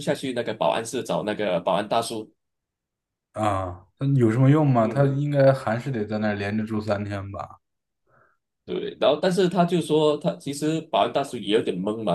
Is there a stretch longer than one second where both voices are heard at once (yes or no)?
no